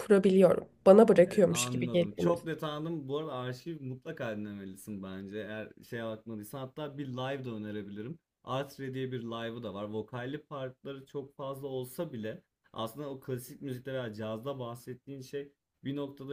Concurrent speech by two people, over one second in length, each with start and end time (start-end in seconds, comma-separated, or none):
1.2-2.6